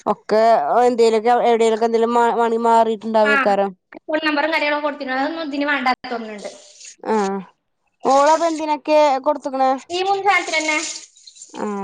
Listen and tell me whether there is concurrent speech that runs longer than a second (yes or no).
no